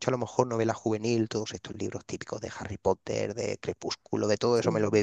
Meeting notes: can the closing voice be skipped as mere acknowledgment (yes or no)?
yes